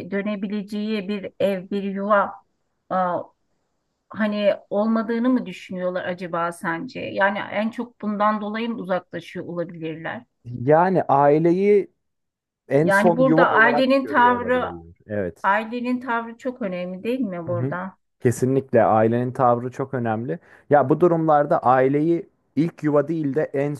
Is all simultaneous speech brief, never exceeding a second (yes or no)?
no